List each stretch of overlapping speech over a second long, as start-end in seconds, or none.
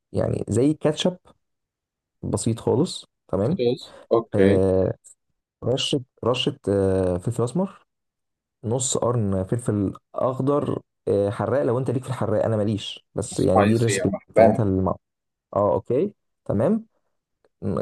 13.3-14.6